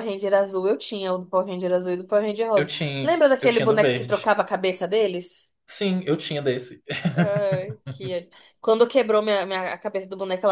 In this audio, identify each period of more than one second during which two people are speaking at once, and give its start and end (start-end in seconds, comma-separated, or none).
2.5-4.4